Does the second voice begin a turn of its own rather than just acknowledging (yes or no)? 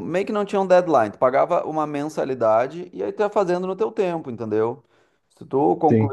no